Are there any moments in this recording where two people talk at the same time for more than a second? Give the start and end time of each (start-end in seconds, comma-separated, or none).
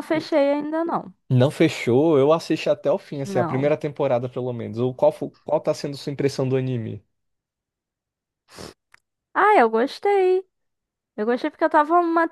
none